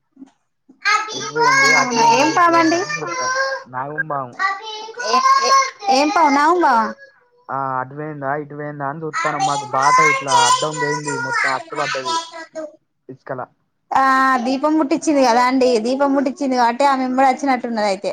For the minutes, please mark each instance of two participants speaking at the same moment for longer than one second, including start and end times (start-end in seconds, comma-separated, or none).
1.2-2.8